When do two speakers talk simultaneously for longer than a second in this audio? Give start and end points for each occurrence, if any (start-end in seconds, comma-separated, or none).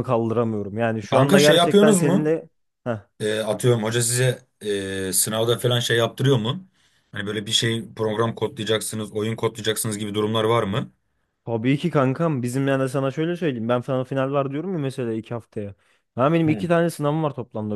1.1-2.3